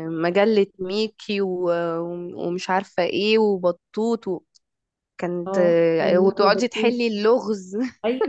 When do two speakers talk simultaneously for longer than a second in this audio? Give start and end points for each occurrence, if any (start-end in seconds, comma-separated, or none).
5.5-6.9